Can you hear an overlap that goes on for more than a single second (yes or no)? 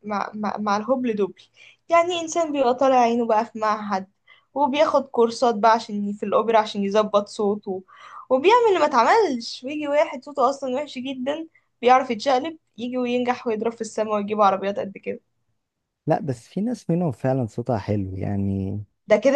no